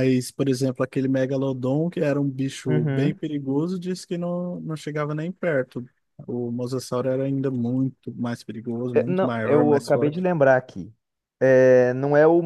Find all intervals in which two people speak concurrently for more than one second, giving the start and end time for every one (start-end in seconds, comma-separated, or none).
8.9-10.3